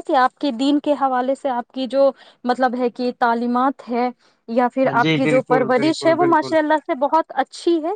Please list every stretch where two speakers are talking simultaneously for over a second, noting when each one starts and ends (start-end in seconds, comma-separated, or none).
4.8-6.5